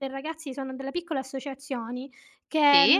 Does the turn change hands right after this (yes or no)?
no